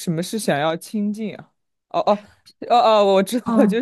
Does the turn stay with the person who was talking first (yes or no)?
no